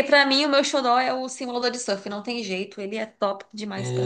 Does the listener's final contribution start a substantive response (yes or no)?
yes